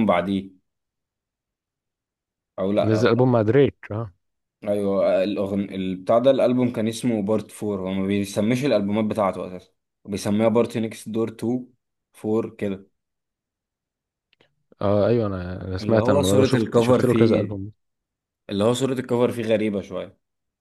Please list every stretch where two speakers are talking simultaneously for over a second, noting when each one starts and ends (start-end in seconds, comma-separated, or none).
15.8-17.6